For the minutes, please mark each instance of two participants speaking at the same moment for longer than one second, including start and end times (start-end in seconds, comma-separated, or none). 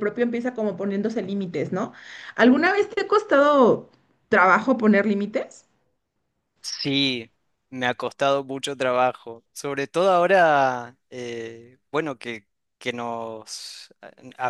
none